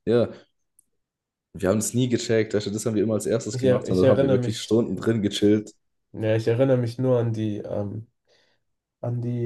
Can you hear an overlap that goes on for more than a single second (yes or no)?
yes